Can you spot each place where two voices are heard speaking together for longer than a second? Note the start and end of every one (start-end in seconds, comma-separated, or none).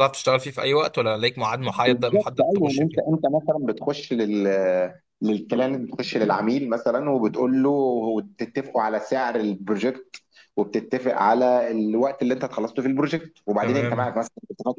1.6-3.2